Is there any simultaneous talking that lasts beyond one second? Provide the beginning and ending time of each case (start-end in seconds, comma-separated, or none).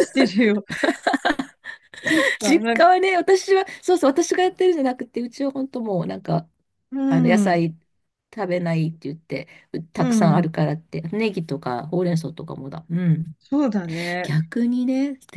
none